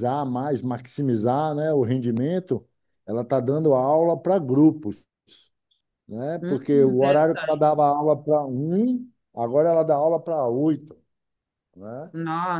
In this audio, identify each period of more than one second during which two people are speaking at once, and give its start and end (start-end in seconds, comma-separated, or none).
6.4-7.8